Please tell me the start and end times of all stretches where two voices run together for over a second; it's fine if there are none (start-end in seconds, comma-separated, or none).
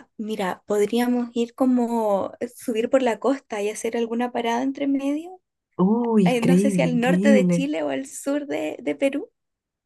6.2-7.7